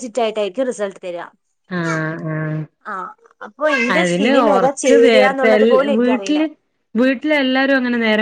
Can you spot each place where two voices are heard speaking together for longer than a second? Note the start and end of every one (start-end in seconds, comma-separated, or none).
4.0-6.3